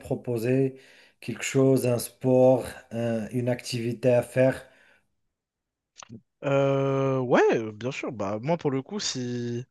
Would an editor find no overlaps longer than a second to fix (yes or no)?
yes